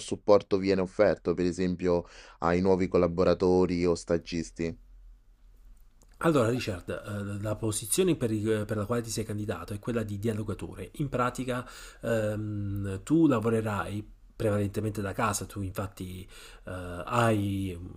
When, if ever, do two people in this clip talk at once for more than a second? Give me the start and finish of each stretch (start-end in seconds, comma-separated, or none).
none